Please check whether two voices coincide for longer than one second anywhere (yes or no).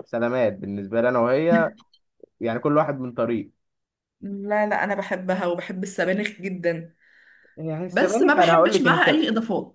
yes